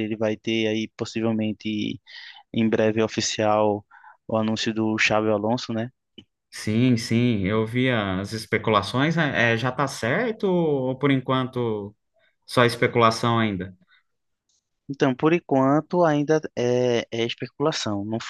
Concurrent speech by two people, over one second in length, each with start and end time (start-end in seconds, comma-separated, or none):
none